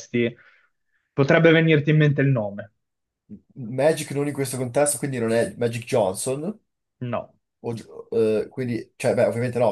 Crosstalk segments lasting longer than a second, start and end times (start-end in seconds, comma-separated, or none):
none